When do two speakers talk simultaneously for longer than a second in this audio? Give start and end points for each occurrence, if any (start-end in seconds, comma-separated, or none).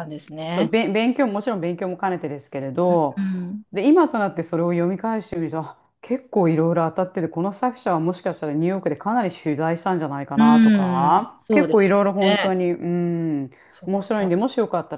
10.3-12.6